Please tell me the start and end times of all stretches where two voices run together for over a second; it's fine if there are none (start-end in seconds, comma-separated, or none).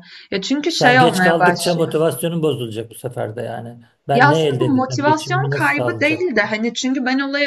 0.7-1.9, 4.1-6.2